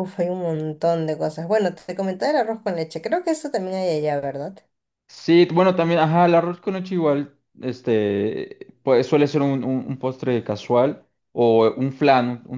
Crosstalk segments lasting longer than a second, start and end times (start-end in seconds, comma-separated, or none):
none